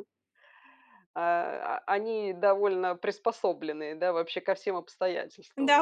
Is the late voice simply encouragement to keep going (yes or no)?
no